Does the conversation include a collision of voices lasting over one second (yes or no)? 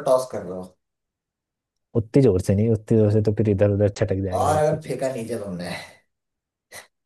no